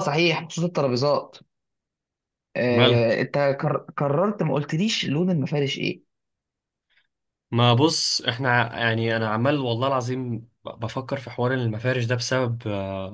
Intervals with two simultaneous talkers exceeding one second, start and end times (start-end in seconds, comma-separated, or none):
none